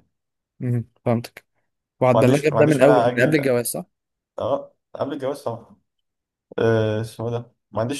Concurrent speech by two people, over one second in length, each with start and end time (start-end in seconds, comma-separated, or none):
2.1-3.5